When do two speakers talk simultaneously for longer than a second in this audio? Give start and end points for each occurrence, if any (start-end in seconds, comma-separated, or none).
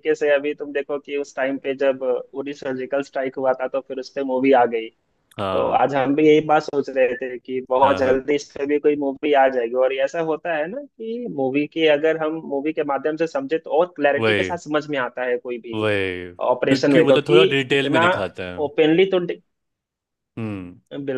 16.5-18.1